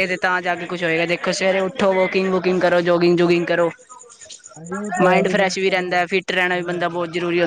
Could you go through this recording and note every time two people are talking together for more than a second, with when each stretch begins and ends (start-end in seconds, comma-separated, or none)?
5.0-7.0